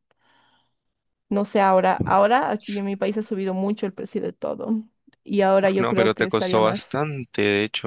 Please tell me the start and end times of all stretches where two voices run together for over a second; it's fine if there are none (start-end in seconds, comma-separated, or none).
5.6-7.0